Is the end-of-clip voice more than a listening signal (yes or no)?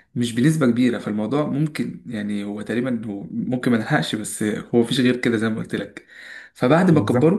no